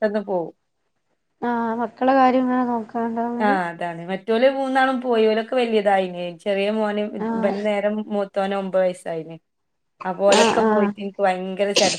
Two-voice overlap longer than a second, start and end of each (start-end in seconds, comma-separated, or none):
none